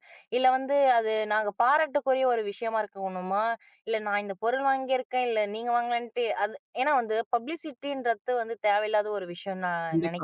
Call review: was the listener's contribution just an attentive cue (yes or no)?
no